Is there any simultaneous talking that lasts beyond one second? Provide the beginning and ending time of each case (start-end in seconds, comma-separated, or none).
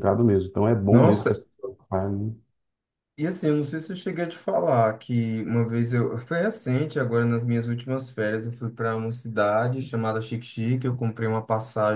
none